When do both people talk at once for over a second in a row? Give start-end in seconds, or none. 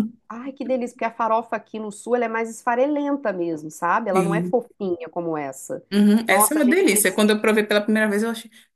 none